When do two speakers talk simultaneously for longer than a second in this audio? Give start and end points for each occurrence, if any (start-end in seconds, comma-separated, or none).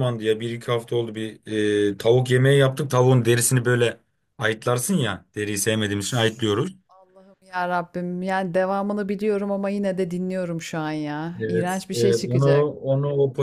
11.4-12.7